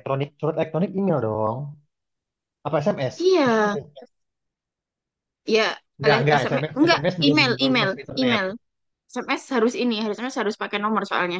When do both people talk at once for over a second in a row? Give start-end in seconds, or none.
6.0-8.4